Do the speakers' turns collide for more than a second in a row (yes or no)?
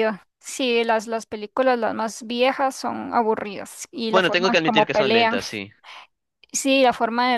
yes